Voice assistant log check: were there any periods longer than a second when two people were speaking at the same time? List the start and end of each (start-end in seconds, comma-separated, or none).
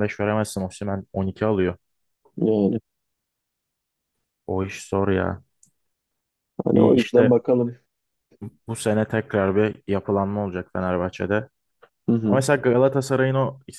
none